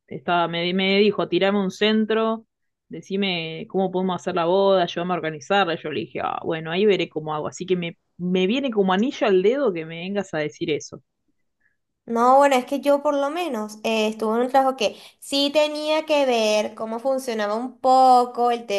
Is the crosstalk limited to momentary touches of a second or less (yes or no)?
yes